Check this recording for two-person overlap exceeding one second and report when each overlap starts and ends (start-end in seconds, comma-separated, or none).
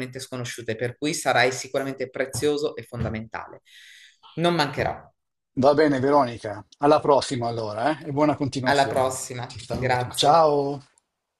8.6-10.5